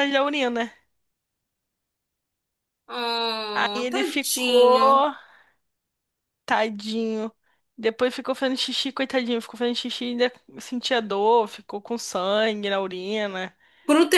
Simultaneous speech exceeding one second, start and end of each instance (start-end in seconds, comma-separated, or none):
3.5-4.9